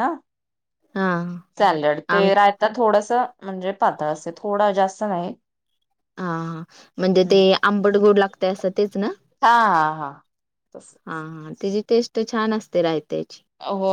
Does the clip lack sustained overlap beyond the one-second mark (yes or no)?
yes